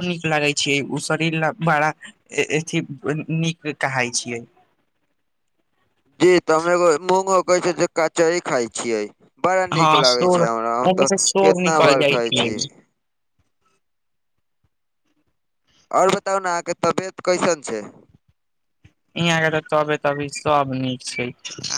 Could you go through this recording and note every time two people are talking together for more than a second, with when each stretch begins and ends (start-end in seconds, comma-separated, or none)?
9.8-12.6